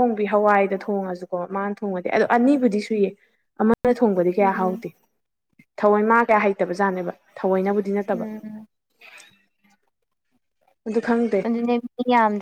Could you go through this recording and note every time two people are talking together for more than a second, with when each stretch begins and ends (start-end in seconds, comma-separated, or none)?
none